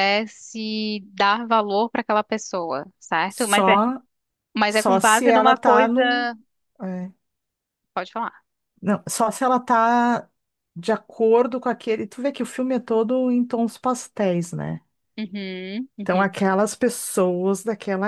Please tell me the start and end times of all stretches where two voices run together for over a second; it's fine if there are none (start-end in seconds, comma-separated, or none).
4.7-6.3